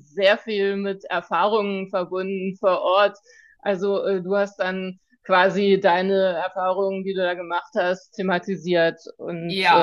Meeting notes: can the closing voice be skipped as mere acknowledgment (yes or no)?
no